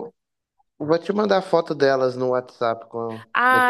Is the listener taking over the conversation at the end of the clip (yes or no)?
yes